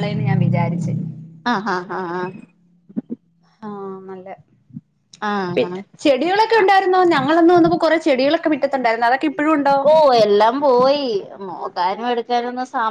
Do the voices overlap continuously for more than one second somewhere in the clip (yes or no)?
no